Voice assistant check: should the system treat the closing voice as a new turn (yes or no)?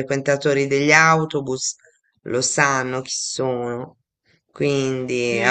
yes